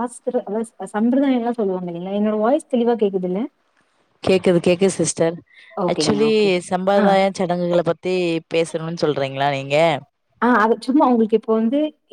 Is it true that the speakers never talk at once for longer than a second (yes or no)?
yes